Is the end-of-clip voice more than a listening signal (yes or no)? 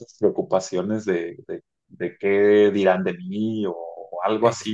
no